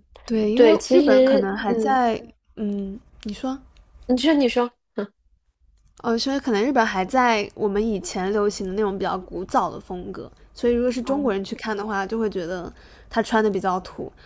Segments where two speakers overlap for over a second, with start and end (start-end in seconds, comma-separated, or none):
0.5-2.0